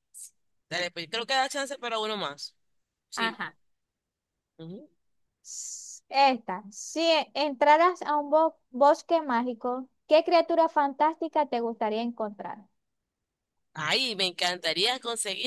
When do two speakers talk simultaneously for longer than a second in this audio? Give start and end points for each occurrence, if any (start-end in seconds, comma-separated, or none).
none